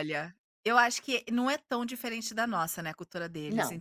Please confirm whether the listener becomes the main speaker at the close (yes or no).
no